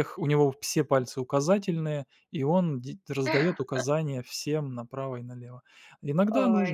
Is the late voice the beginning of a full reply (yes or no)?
no